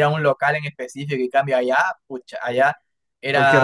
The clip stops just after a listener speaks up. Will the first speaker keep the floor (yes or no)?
yes